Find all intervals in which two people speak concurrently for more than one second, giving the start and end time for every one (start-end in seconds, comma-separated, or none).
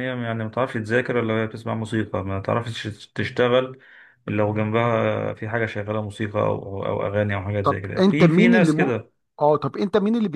7.6-8.9